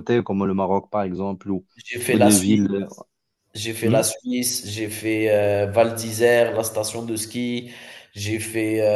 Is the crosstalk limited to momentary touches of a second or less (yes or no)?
yes